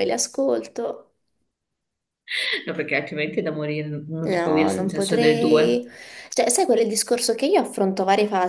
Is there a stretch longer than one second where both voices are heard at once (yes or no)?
yes